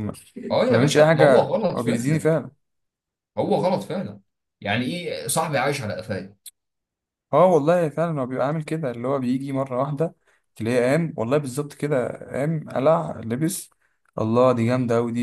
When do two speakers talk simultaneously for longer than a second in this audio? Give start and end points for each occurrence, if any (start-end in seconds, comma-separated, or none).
0.5-2.3